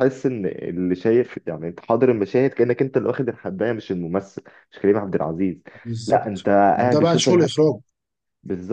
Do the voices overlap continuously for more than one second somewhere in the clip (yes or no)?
yes